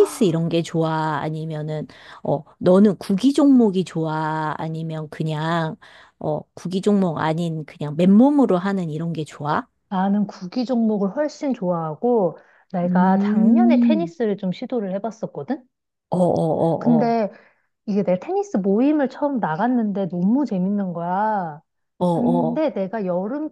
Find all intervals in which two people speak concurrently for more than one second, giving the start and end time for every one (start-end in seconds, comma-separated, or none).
12.8-14.1